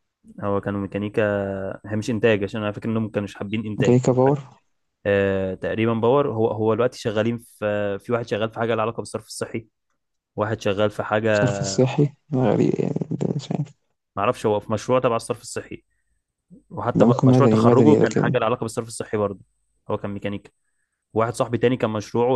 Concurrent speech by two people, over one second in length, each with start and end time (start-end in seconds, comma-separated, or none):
16.9-18.4